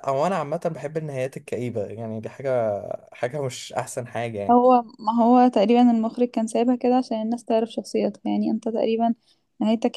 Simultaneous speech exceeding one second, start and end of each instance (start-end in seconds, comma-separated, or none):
none